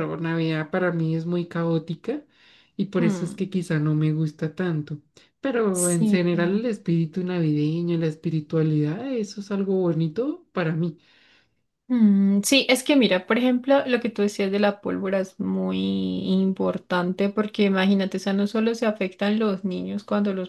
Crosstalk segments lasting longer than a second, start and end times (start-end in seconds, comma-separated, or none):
none